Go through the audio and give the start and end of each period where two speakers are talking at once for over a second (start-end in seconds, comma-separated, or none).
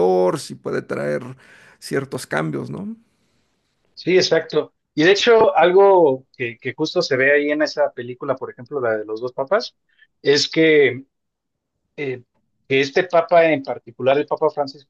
none